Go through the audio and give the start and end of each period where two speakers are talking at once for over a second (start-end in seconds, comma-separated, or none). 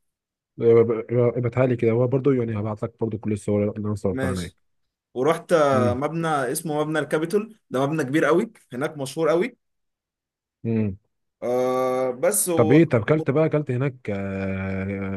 none